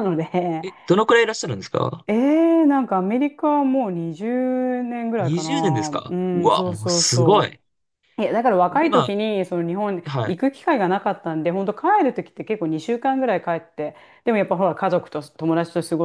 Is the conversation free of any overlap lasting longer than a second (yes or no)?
no